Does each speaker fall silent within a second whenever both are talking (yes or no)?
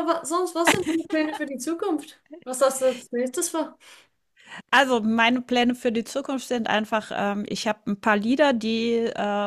yes